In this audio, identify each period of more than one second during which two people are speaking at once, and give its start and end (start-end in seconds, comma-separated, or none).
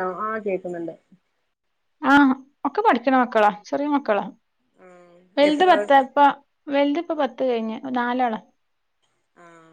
none